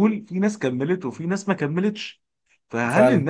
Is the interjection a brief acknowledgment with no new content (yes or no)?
yes